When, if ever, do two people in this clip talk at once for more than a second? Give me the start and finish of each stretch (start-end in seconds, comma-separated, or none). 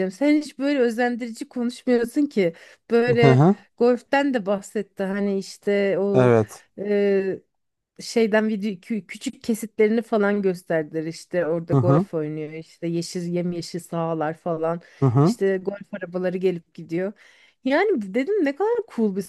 none